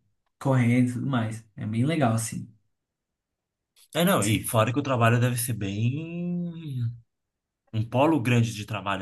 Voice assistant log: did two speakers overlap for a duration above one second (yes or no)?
no